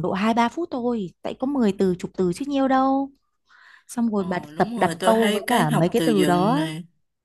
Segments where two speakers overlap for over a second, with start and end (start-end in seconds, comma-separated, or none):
4.2-6.6